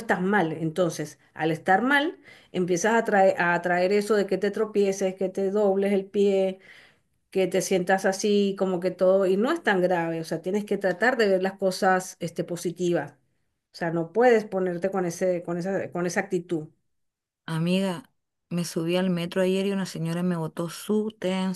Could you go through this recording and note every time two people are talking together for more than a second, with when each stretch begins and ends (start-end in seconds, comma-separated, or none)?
none